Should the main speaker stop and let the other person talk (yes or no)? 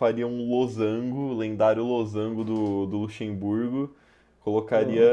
no